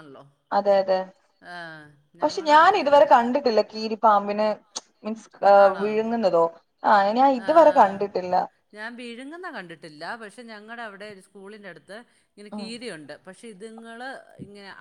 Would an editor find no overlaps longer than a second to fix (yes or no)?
yes